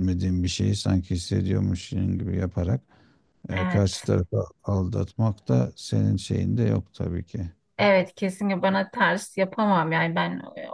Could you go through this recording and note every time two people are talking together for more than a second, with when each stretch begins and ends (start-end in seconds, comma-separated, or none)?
none